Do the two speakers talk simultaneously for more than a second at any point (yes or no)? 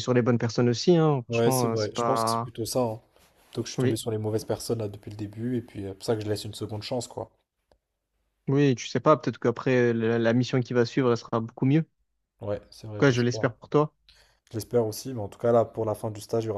yes